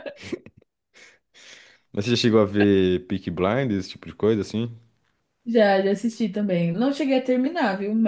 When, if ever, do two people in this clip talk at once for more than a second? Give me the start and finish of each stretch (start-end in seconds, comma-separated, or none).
none